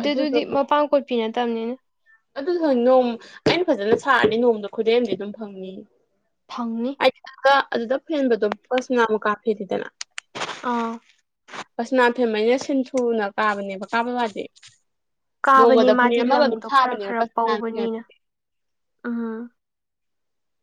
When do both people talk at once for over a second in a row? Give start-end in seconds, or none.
15.5-17.9